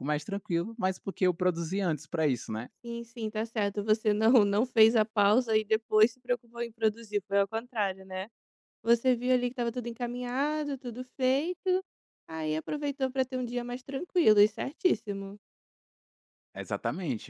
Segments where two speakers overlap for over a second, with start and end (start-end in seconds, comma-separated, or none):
none